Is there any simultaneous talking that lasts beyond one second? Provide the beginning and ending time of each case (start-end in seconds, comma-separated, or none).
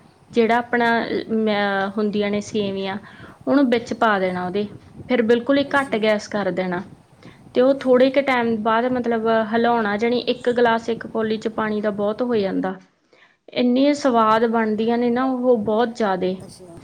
none